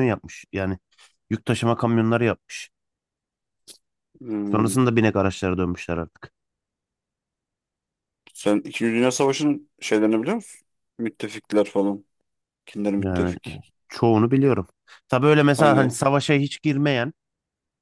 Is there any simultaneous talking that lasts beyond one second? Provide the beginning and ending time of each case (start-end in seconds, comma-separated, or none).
none